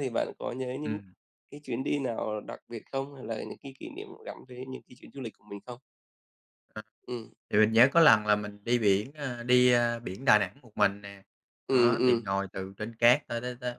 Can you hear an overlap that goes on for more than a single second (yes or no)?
no